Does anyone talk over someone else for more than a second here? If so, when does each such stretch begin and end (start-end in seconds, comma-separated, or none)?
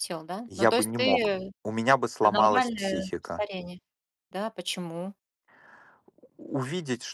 2.2-3.5